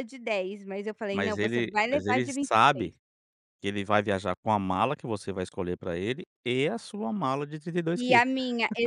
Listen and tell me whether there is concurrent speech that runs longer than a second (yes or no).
yes